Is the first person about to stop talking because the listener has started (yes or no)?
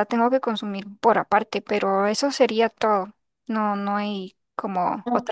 yes